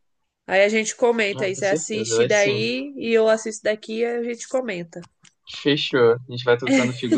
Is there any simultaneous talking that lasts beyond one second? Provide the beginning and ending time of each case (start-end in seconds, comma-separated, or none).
1.4-2.6